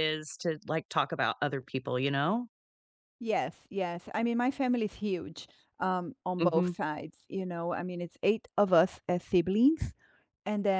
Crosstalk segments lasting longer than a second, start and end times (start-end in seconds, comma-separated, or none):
none